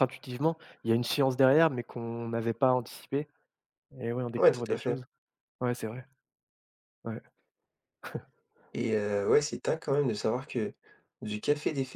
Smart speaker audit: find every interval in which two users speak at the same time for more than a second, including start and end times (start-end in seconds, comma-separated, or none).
none